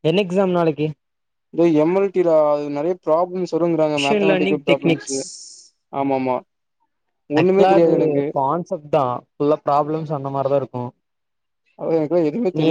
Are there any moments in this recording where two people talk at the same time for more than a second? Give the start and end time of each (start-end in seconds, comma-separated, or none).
4.0-5.2